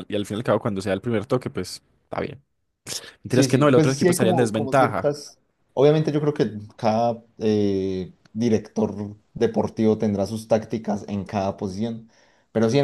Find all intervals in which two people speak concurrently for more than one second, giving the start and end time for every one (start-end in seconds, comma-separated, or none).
3.3-5.1